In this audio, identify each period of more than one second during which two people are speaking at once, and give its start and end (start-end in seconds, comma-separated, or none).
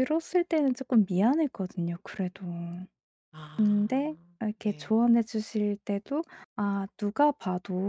3.6-5.0